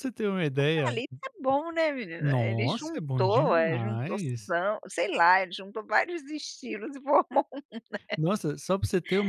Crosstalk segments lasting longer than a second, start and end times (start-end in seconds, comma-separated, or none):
2.2-4.5